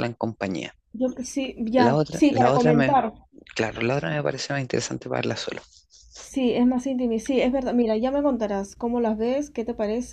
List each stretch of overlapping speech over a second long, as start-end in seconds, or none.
1.7-2.9